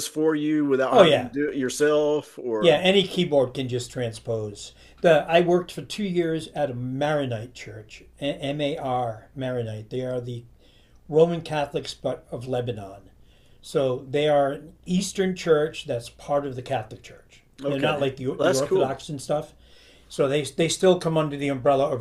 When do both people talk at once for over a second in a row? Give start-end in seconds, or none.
17.6-19.0